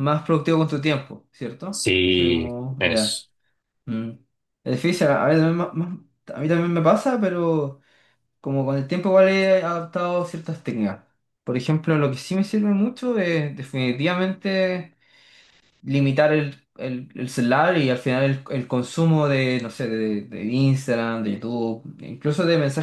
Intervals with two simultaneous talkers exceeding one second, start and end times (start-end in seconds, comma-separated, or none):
1.7-3.2